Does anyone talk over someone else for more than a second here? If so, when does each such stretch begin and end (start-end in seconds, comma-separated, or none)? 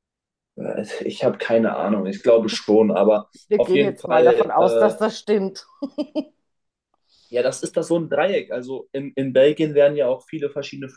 3.5-5.0